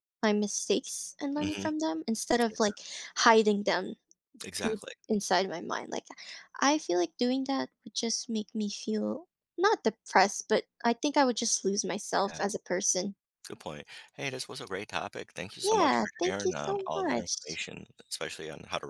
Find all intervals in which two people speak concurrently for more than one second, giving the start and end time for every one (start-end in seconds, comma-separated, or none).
15.6-17.6